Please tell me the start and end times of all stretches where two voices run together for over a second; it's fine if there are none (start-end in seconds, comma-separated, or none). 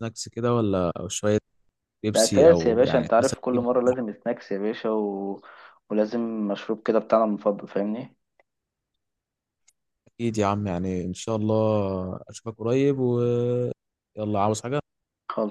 2.1-3.6